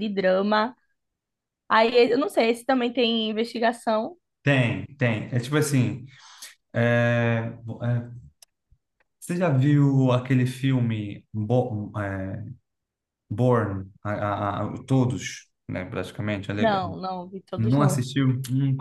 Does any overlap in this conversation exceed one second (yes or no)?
no